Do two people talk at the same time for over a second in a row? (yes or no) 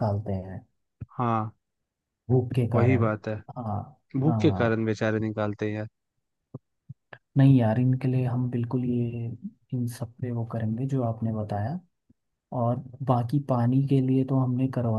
no